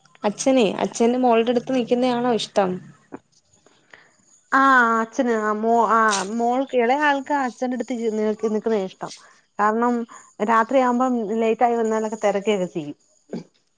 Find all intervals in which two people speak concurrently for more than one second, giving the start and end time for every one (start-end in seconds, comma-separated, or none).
none